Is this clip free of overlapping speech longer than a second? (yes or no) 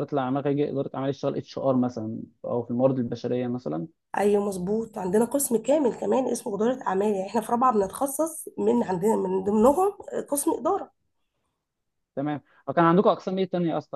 yes